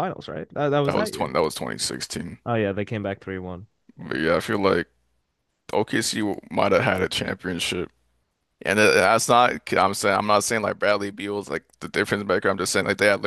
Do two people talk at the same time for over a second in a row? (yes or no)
no